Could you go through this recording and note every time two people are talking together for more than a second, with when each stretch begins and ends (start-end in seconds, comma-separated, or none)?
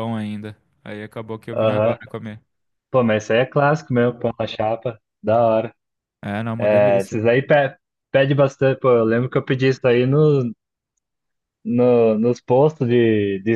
none